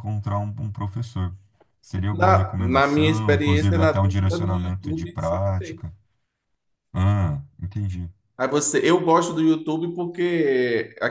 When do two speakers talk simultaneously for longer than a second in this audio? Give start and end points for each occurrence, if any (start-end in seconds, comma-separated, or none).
2.1-5.8